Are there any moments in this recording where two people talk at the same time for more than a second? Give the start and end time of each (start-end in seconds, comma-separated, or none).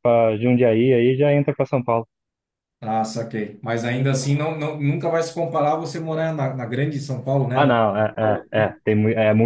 7.5-8.7